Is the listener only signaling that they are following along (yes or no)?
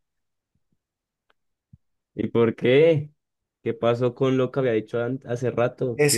no